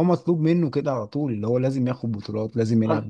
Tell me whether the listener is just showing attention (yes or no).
no